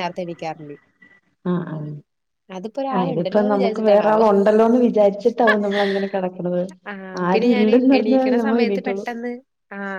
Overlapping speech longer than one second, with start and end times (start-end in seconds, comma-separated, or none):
3.0-4.2